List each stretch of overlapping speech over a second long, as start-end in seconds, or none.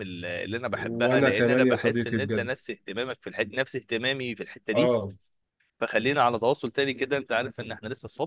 0.7-2.6